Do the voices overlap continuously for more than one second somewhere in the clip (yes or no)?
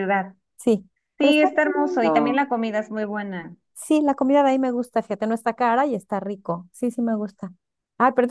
yes